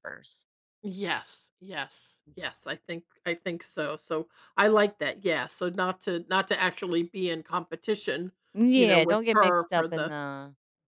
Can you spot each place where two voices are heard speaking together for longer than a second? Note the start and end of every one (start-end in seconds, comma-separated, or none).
8.7-10.1